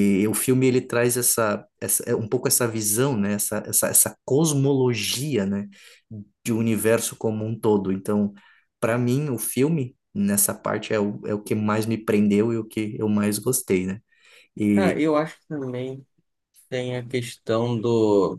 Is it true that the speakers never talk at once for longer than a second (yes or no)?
yes